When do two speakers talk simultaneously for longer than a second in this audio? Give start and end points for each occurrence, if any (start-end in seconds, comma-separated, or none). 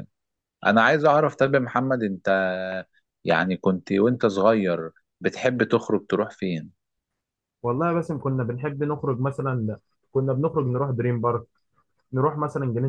none